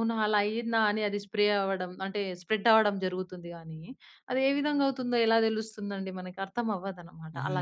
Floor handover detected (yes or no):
yes